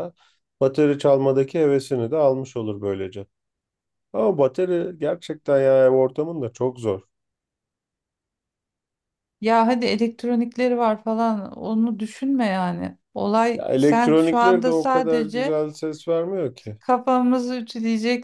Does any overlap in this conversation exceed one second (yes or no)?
yes